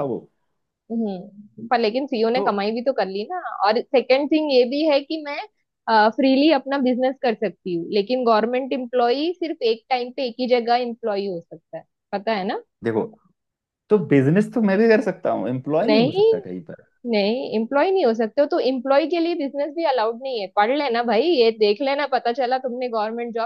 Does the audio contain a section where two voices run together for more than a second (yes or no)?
no